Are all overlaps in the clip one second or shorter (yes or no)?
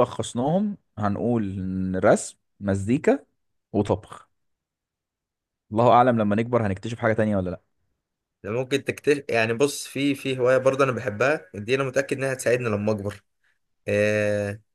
yes